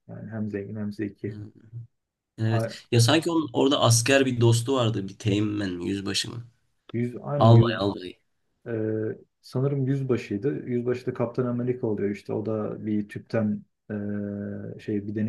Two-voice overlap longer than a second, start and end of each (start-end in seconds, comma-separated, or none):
none